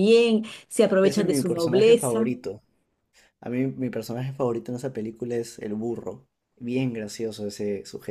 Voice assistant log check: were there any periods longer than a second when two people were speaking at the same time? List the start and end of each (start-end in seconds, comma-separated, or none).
1.0-2.3